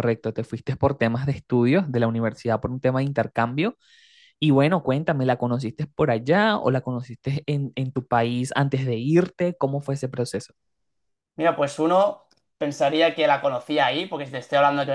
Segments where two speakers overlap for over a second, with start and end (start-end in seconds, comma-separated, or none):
none